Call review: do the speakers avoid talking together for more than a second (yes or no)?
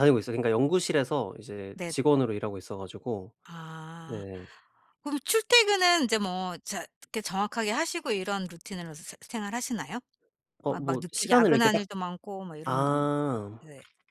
no